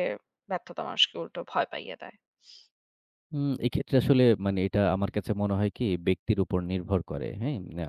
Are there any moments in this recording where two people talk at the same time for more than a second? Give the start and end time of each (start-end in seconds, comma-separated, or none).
none